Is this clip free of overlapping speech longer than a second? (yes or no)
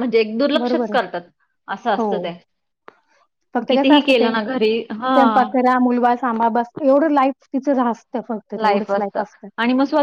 no